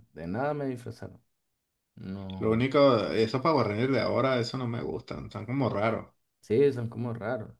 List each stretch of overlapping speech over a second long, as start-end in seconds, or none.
none